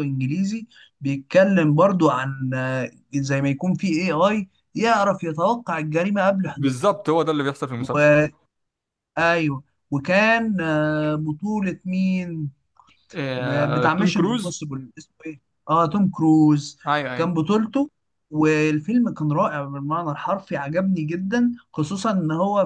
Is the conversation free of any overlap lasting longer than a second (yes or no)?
no